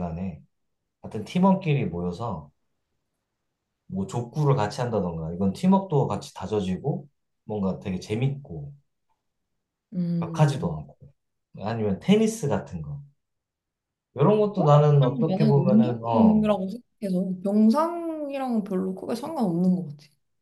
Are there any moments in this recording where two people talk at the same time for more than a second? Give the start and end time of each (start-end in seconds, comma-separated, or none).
14.6-16.5